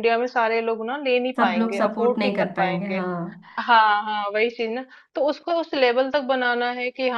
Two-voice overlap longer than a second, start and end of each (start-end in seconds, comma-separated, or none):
1.4-3.0